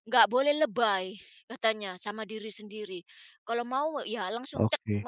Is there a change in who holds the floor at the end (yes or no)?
no